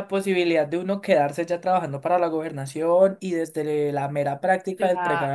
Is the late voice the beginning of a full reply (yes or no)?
no